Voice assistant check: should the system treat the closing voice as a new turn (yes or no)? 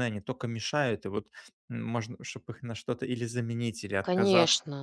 yes